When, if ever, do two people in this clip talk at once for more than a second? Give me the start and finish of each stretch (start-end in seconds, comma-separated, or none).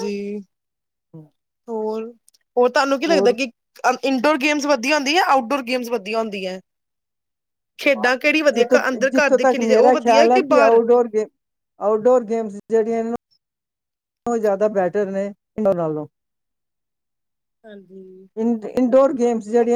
8.5-10.8